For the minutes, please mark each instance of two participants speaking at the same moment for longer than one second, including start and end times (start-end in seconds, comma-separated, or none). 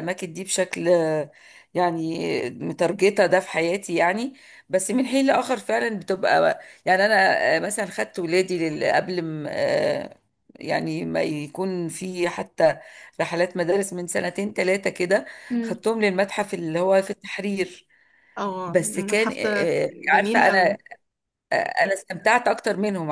18.7-20.8